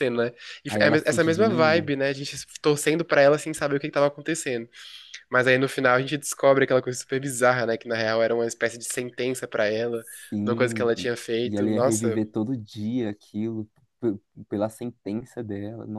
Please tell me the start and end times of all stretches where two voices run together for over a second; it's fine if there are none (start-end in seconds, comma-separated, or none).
0.7-1.9, 10.4-12.2